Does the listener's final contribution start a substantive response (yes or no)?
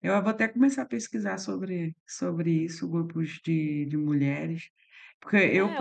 yes